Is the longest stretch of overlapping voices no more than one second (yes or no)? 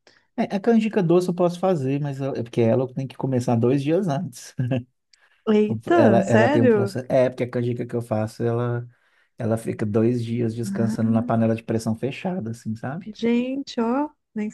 no